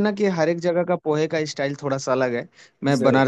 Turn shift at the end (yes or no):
no